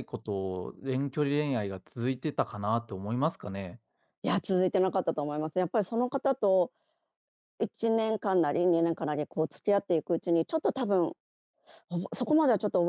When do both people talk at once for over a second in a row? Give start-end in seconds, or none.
none